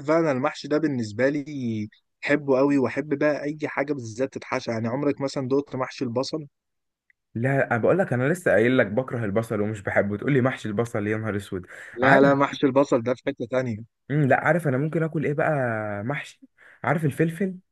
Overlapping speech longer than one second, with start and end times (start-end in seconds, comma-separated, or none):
none